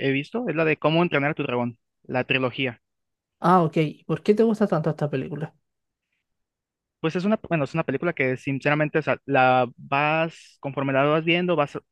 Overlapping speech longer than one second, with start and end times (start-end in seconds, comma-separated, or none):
none